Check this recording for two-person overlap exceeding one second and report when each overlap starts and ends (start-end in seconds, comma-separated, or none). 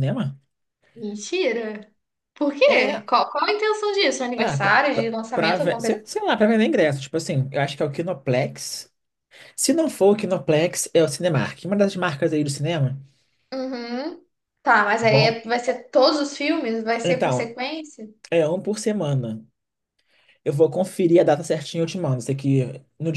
4.3-6.2